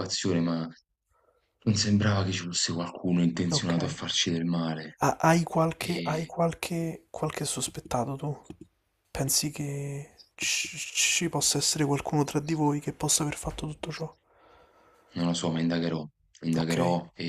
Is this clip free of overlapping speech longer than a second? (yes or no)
yes